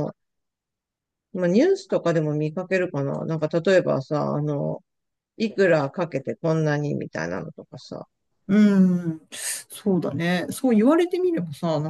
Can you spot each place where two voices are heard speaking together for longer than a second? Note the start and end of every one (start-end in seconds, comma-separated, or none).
none